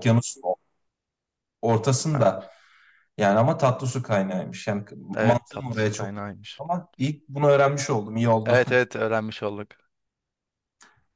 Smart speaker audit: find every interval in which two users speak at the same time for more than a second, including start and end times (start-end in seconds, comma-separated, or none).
5.2-6.6